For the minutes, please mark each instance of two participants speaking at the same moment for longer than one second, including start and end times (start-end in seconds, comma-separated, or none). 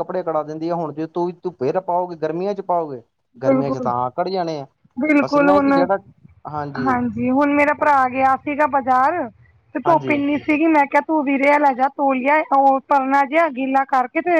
none